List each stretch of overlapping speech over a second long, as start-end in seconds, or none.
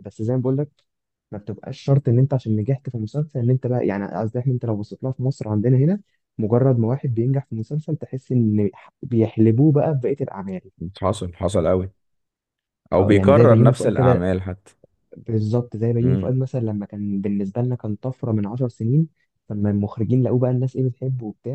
13.0-14.2